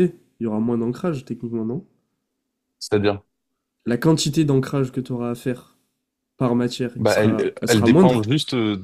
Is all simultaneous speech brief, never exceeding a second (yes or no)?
no